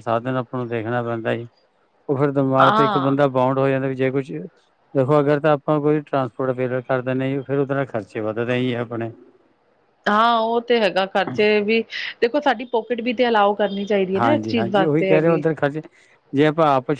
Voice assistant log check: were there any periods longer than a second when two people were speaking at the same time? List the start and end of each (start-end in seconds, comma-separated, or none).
14.2-15.4